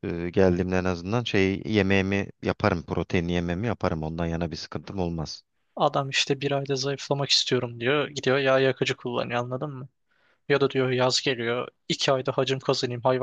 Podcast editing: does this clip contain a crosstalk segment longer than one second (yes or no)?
no